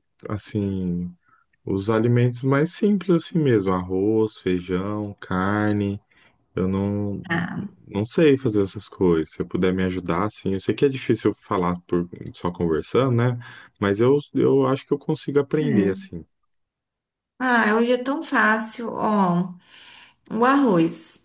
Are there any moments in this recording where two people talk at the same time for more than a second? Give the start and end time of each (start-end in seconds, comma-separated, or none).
none